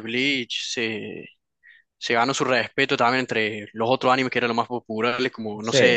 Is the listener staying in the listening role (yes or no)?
yes